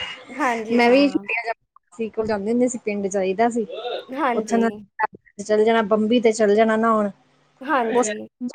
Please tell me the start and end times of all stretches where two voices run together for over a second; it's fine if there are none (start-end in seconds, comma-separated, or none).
none